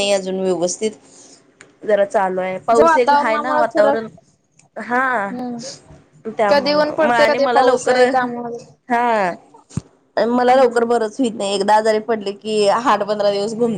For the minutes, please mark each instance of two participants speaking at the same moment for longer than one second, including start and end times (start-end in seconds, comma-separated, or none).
2.8-4.0, 6.5-8.6